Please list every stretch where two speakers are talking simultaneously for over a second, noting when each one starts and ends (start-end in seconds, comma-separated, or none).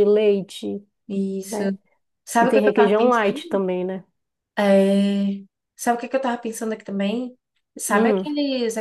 2.4-3.6